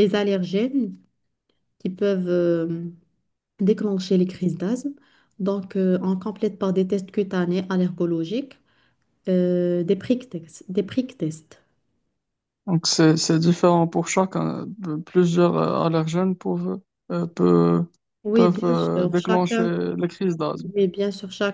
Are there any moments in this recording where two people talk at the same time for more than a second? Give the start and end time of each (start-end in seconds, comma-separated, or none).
18.3-19.7